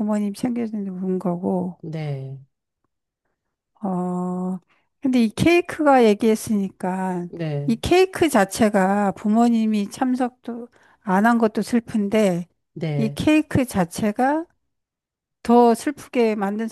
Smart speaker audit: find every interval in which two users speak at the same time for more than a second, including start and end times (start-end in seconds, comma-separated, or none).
none